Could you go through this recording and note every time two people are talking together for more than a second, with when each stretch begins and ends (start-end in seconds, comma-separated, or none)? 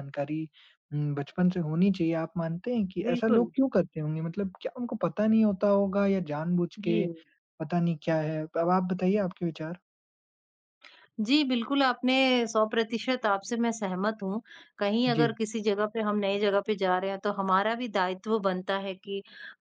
none